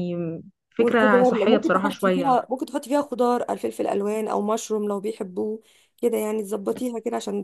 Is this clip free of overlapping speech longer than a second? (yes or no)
no